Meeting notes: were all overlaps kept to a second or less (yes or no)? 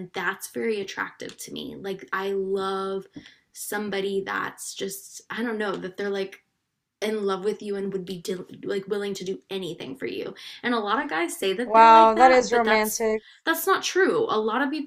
no